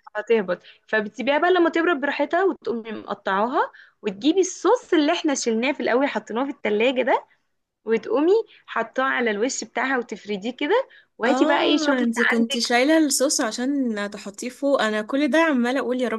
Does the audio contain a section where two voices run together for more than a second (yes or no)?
yes